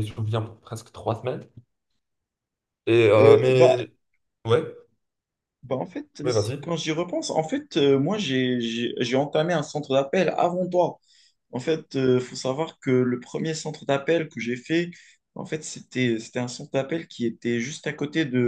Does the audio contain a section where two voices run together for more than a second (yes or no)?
no